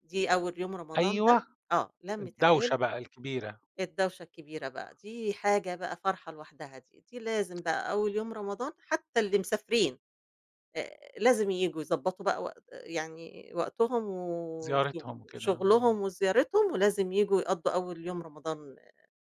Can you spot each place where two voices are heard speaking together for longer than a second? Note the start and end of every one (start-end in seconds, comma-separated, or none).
14.6-16.0